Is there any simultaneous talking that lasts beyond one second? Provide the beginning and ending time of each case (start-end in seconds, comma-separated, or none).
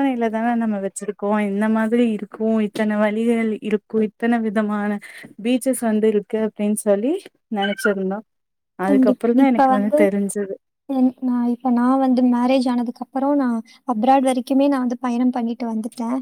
none